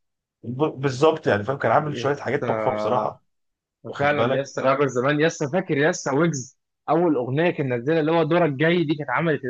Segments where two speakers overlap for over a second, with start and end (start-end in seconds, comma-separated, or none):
1.9-3.2